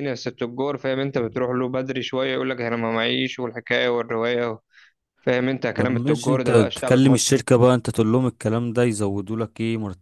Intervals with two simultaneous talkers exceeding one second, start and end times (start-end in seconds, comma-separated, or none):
5.8-7.2